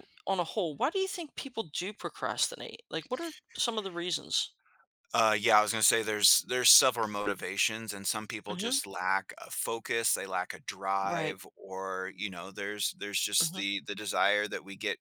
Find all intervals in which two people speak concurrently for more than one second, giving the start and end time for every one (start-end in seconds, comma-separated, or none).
none